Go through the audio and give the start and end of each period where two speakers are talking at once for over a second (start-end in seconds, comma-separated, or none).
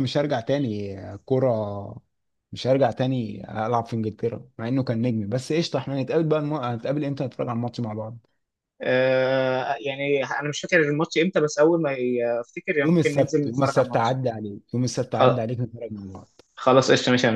12.8-14.2